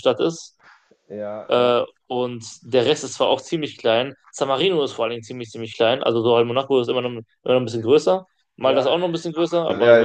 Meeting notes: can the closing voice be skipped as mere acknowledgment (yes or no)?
no